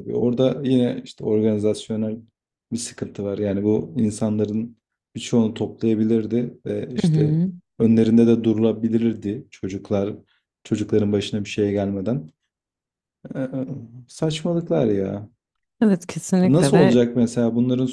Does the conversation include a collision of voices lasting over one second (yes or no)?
no